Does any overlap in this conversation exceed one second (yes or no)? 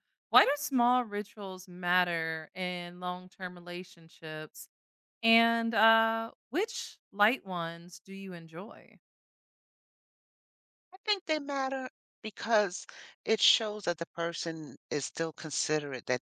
no